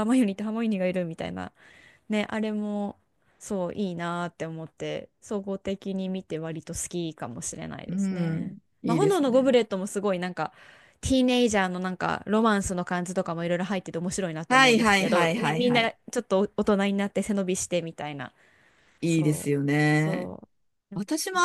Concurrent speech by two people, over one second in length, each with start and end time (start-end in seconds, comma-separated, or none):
7.9-9.6, 14.5-15.9, 19.1-20.3